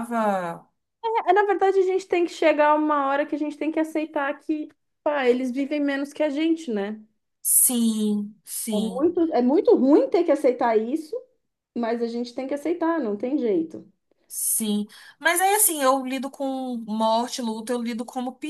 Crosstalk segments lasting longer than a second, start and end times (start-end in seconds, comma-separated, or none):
none